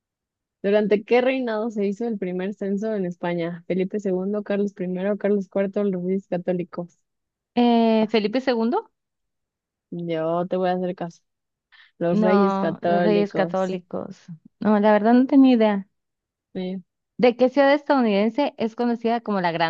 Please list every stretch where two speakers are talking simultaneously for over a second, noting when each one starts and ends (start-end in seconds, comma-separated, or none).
12.1-13.8